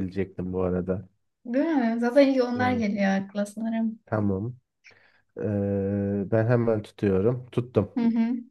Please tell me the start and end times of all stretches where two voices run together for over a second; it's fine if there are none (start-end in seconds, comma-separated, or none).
none